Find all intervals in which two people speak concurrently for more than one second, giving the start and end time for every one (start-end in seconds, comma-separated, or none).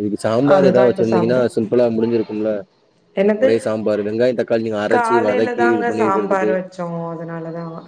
4.9-6.5